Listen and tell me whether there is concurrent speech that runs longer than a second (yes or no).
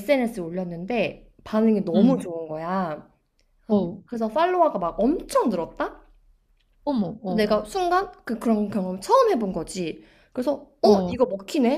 no